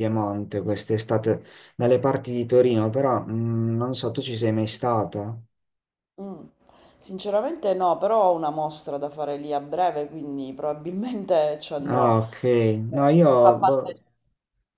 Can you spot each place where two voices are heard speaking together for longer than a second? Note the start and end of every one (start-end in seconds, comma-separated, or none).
none